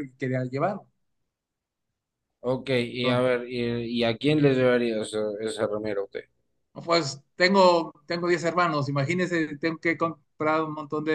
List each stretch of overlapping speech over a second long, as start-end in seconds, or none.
none